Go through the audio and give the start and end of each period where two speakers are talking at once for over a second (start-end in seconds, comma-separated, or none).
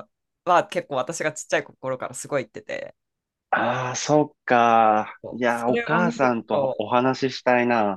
5.2-6.9